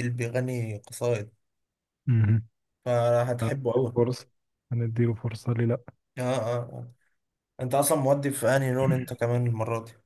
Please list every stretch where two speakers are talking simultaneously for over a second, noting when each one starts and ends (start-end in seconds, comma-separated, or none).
none